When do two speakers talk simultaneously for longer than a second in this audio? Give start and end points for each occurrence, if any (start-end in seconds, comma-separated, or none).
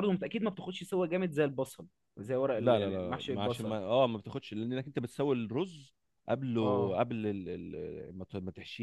2.6-3.8